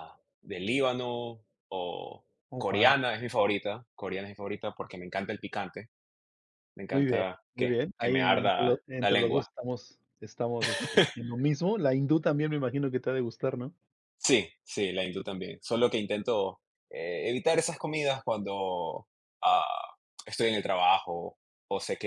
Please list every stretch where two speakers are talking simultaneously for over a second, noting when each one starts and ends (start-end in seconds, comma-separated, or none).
6.9-9.5